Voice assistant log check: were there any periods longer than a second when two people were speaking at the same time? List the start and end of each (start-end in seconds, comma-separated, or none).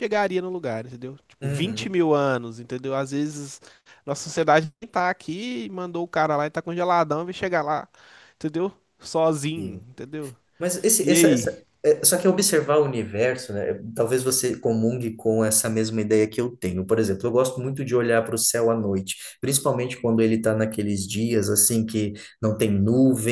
none